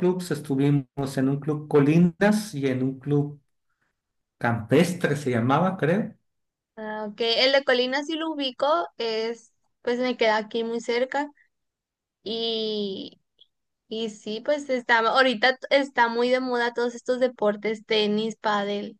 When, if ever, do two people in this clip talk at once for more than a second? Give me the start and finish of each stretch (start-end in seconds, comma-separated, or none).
none